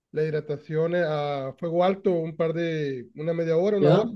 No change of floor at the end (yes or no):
yes